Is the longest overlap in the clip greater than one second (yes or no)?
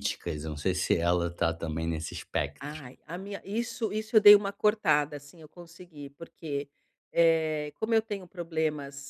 no